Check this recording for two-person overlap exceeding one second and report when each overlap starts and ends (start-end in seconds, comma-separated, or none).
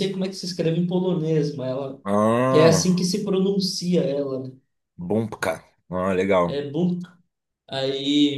none